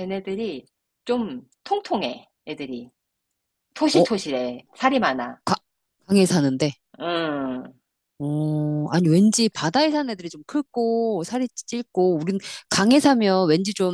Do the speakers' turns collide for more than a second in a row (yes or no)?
no